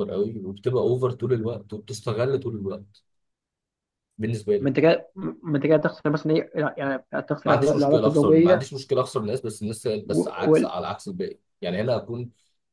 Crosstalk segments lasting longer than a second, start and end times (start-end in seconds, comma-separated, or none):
7.4-8.7